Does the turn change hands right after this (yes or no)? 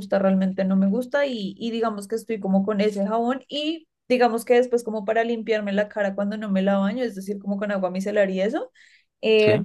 no